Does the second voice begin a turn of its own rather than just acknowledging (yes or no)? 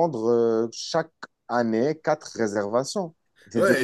yes